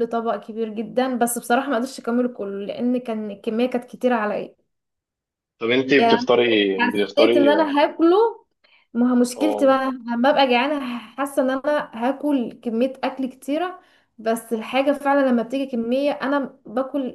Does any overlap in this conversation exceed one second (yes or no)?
yes